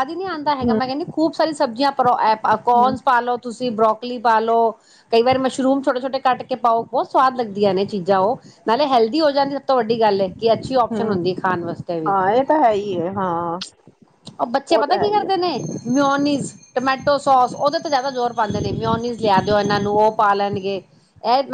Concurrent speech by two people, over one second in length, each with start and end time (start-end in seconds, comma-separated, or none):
none